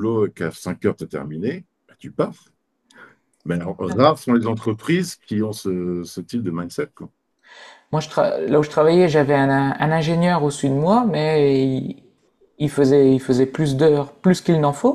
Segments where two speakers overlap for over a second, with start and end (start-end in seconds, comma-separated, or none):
none